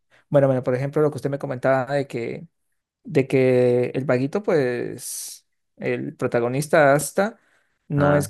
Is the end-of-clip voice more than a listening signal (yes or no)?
no